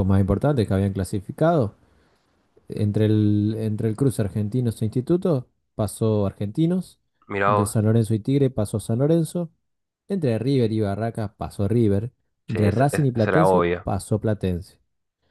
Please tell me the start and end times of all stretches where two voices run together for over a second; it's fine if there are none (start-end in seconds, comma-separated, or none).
12.5-13.8